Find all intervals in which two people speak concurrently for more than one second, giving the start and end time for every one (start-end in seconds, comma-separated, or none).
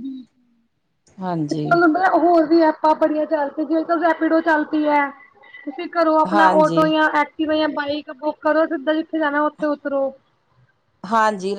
none